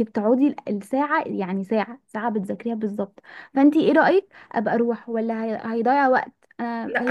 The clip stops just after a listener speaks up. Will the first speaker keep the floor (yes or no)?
no